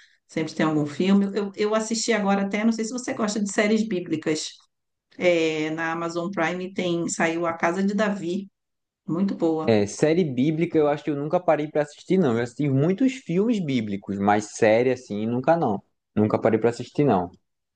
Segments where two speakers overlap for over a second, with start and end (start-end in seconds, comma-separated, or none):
none